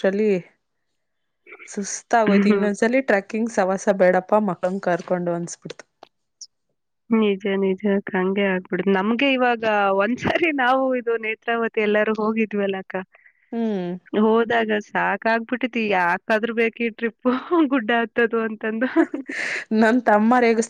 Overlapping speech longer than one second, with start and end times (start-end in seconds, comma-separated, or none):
none